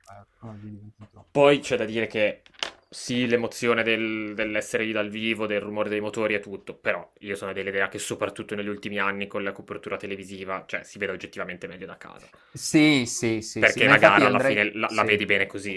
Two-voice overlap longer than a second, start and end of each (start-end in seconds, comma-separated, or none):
13.6-15.2